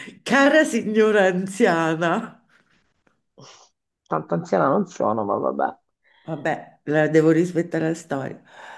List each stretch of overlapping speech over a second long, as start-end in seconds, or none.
none